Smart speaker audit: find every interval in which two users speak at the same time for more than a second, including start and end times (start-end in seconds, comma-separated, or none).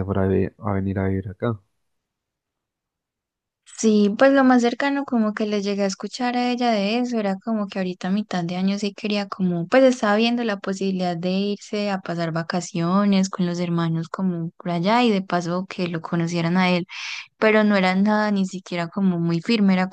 none